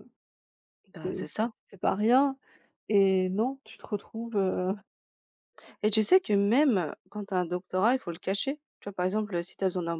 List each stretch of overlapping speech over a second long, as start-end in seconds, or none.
none